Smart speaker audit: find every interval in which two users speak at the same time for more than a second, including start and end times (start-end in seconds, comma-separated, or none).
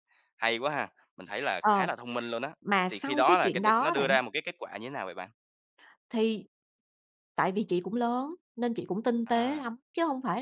2.9-4.2